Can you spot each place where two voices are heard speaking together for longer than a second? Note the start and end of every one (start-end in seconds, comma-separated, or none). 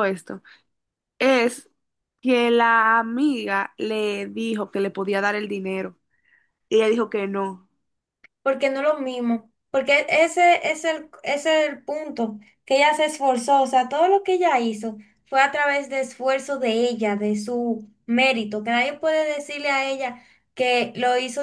none